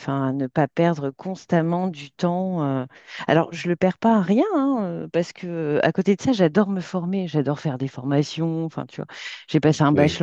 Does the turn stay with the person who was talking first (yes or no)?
yes